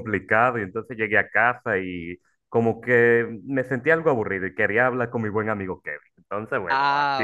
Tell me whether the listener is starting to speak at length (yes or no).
yes